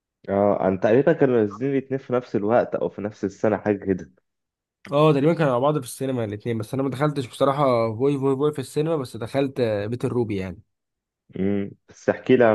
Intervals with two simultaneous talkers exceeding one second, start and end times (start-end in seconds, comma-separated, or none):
none